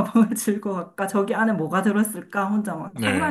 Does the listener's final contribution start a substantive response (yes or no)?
yes